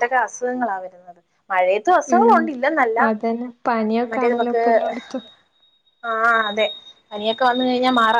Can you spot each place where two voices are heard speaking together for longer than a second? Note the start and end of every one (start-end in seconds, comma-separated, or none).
none